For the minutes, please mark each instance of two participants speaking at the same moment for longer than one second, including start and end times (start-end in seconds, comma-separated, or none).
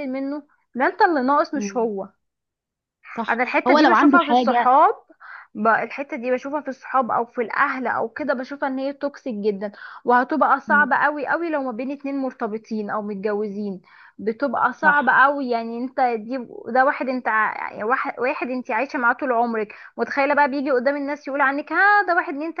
3.3-4.7